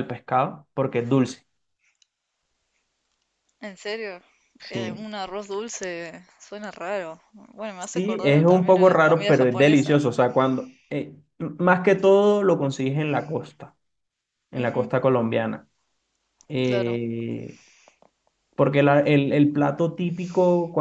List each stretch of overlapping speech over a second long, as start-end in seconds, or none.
7.8-10.0